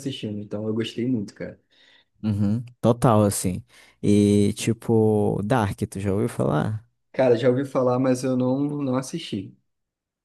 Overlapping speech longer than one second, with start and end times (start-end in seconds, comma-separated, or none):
none